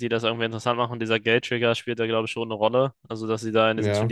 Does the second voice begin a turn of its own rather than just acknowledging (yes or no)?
no